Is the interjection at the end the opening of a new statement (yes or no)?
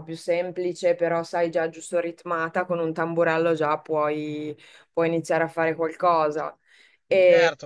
yes